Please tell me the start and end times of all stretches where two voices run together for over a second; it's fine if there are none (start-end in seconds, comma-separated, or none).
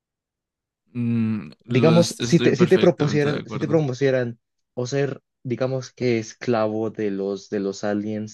1.7-3.8